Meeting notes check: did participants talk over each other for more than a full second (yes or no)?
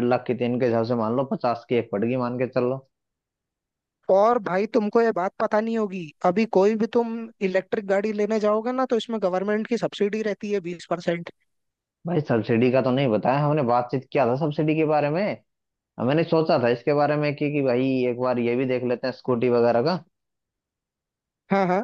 no